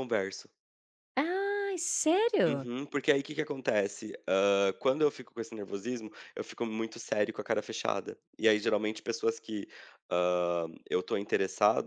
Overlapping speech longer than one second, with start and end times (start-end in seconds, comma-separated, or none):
none